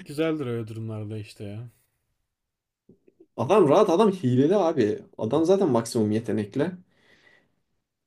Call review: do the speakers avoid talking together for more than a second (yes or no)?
yes